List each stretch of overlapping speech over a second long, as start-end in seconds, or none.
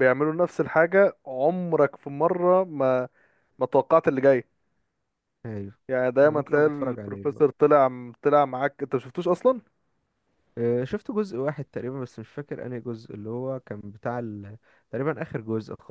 6.2-7.5